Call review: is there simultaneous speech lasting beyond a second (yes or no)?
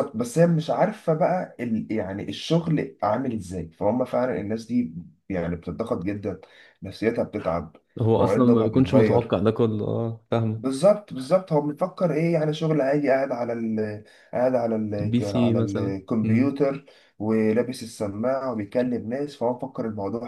yes